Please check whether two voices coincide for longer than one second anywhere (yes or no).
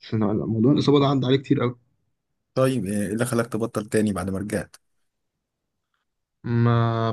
no